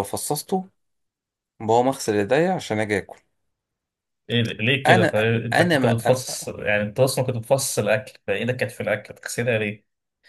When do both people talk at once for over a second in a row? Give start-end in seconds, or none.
4.9-6.2